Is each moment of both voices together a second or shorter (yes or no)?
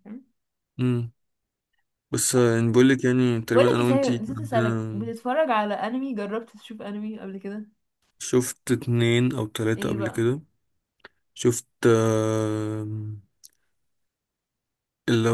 no